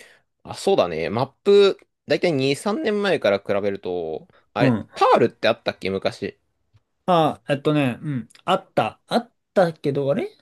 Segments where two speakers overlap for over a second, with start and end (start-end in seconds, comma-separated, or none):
none